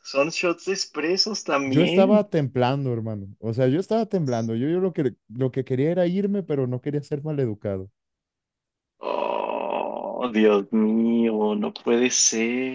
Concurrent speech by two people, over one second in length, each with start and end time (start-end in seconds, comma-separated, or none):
none